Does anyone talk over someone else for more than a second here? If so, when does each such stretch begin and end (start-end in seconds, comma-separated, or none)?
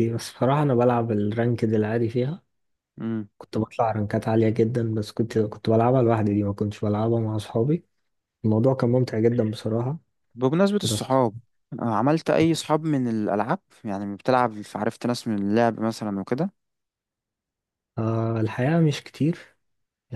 none